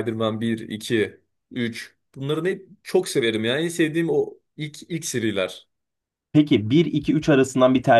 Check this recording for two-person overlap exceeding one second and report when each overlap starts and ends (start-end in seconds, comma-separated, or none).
none